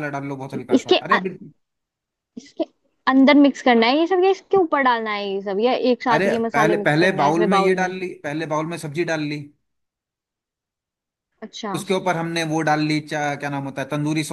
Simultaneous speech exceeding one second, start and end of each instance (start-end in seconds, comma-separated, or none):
6.1-7.9